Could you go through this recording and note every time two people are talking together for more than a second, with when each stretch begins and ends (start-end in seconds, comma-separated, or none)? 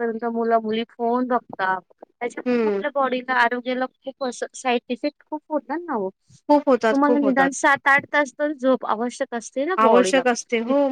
none